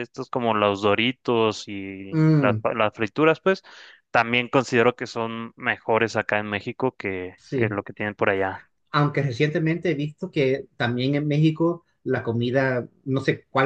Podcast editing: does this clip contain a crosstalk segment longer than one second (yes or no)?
no